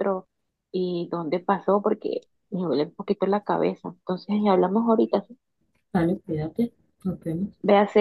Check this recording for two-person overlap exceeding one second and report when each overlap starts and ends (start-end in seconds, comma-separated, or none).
none